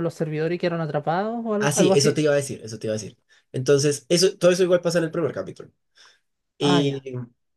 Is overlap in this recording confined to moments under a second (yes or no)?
yes